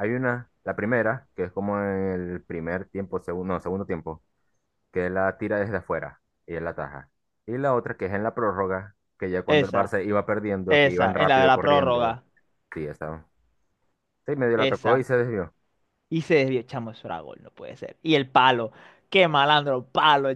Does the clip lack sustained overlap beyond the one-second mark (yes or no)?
no